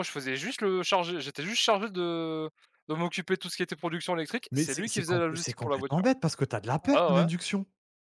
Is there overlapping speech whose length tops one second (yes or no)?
yes